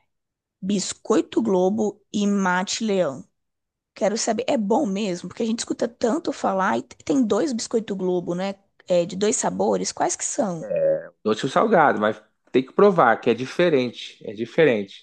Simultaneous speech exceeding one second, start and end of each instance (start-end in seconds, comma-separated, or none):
none